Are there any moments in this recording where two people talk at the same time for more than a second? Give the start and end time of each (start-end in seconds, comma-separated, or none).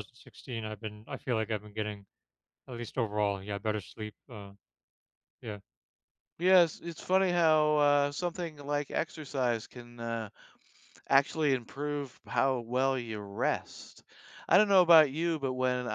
none